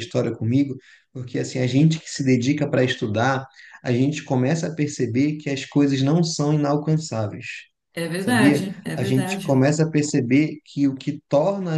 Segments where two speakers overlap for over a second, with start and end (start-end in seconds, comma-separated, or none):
8.2-9.6